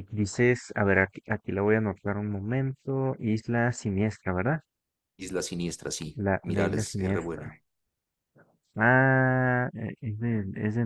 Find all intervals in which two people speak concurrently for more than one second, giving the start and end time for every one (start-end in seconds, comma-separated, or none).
6.3-7.5